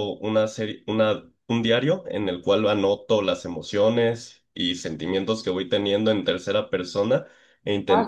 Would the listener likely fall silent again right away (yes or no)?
yes